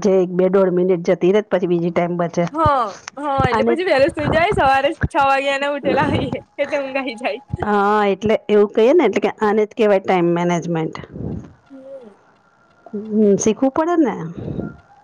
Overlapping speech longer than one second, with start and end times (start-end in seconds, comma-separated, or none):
none